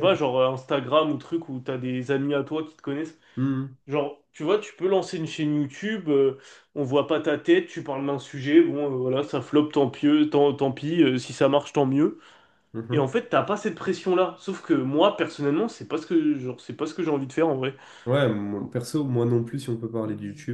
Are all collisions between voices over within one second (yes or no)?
yes